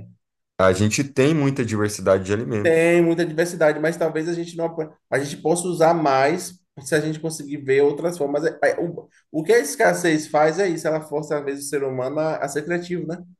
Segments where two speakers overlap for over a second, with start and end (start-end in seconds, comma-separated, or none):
none